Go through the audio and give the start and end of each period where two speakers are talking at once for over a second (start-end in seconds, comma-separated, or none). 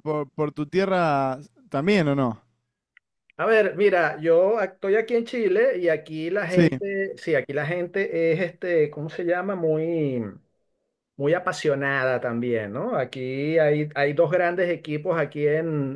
none